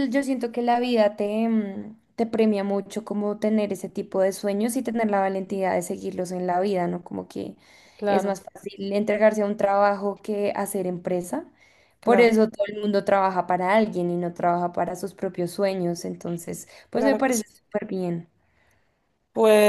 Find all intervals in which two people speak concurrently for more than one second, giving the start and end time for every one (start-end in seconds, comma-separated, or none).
none